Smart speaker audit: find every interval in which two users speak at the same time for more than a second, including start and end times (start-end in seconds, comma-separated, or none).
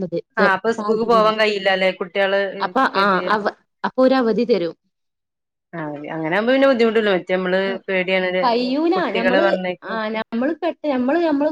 none